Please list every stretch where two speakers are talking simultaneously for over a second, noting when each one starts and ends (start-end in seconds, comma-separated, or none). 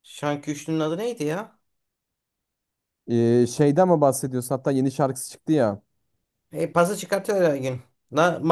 none